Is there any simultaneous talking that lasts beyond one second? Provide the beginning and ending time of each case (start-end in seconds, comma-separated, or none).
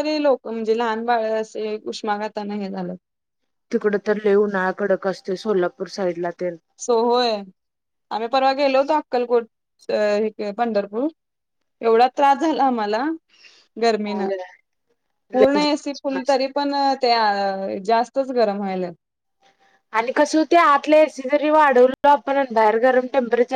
none